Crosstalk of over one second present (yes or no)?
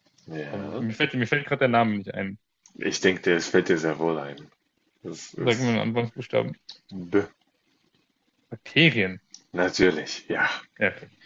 no